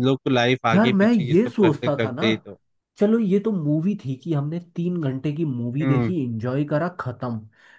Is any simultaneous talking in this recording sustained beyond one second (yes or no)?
yes